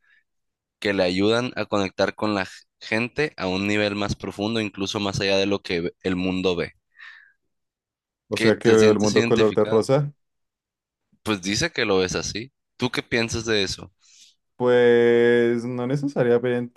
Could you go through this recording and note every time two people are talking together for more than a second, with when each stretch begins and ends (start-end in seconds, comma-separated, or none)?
8.4-9.9